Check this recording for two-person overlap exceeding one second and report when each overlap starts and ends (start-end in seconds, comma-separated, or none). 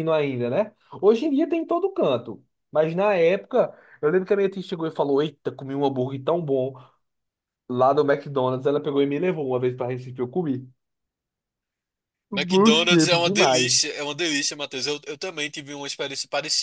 12.3-13.9